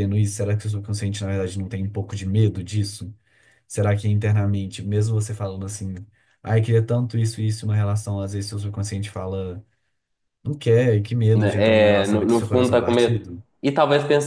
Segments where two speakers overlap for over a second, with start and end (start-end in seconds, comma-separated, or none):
11.3-13.3